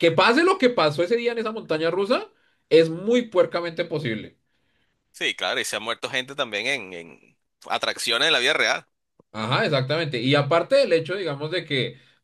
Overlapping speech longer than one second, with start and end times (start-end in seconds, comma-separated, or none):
none